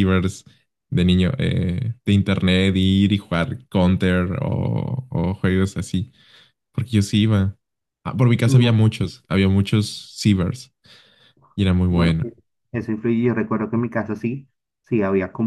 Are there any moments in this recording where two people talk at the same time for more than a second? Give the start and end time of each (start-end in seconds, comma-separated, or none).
none